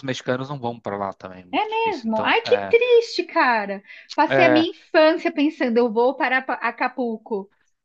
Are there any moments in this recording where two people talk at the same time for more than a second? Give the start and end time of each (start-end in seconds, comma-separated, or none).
1.5-2.8